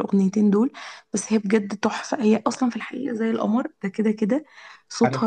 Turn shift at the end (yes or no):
no